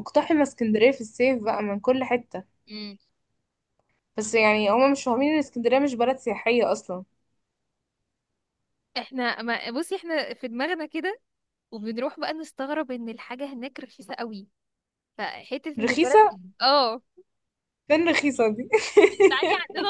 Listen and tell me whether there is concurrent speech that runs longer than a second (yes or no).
no